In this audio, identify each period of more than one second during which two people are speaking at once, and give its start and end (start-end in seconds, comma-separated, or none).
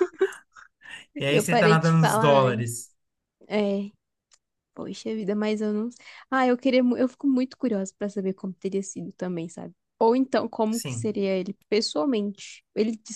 1.3-2.9